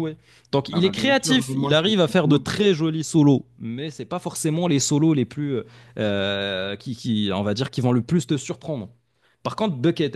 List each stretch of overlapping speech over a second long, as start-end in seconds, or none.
0.7-2.5